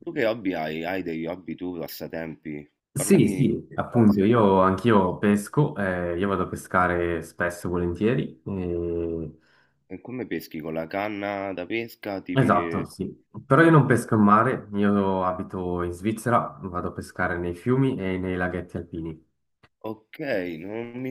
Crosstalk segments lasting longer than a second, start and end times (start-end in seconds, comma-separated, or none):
3.0-4.5